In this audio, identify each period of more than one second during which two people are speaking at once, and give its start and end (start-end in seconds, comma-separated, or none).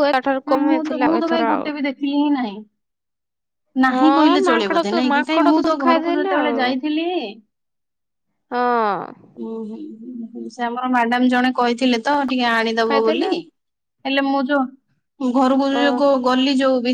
3.9-6.5